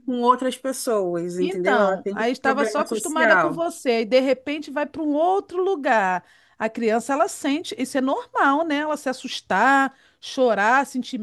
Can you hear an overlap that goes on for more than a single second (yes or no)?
yes